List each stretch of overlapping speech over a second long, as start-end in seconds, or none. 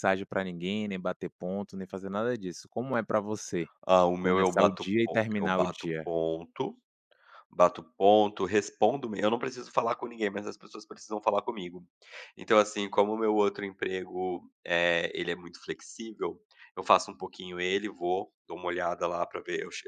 4.2-6.1